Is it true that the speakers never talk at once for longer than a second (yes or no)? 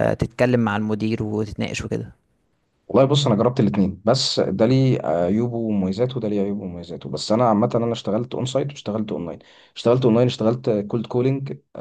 yes